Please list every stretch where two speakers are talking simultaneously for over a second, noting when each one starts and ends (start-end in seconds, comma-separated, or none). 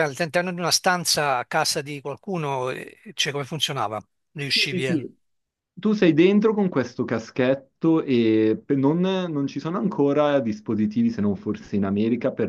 none